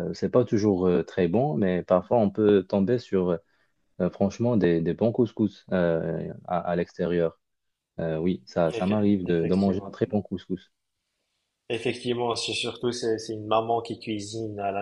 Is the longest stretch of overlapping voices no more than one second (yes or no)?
no